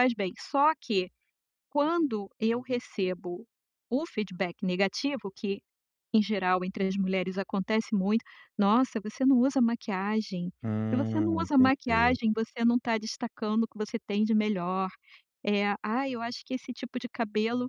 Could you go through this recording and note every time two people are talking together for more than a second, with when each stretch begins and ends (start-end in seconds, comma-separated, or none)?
10.9-12.2